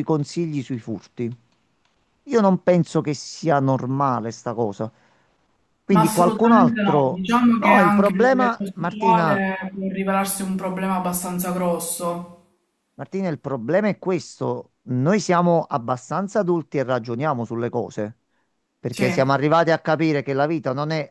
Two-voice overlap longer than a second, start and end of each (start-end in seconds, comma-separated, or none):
5.9-9.4